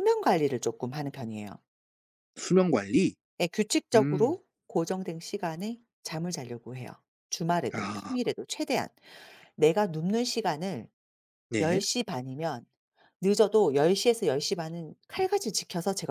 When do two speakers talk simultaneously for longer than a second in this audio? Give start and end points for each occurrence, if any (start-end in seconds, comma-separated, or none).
none